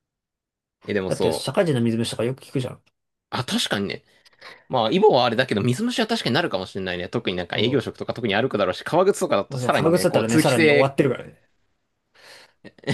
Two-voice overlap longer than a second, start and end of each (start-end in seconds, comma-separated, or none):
9.5-10.9